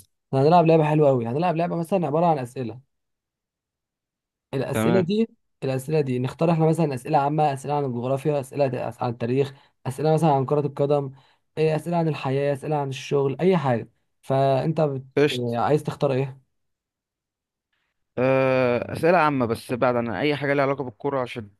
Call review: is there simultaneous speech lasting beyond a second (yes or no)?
no